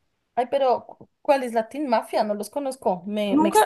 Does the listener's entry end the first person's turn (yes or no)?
yes